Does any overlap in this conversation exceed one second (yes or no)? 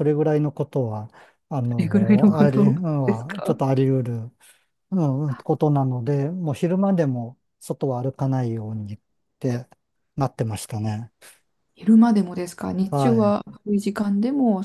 yes